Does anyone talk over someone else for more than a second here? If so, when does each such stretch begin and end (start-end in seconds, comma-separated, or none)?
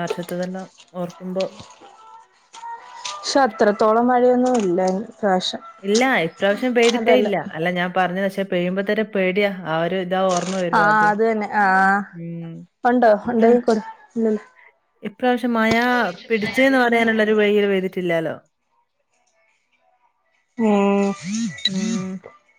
none